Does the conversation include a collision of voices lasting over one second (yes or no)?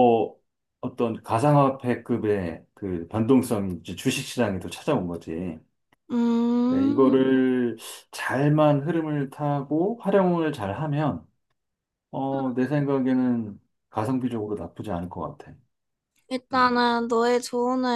no